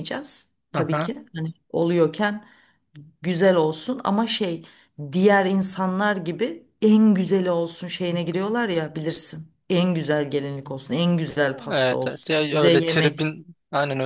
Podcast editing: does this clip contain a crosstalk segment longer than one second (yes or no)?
yes